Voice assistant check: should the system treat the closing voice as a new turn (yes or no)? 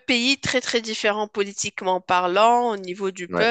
no